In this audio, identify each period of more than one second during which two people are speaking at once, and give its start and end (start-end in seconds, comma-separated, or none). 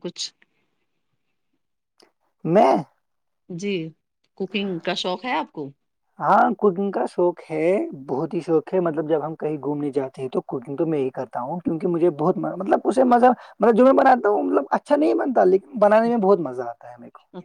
none